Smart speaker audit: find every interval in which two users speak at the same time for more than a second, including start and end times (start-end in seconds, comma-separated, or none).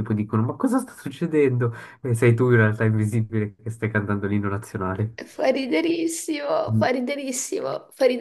none